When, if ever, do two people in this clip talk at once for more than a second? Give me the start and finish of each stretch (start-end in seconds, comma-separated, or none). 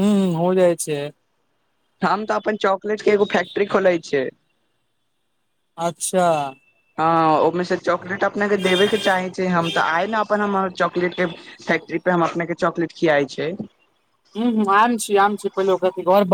none